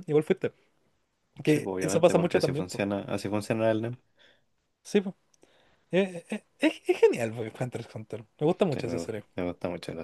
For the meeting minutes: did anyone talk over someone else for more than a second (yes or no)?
yes